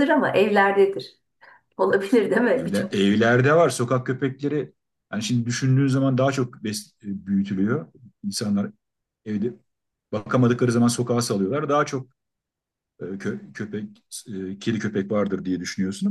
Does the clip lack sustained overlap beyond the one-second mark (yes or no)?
yes